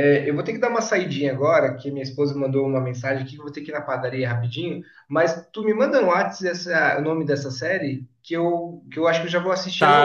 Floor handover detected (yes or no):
yes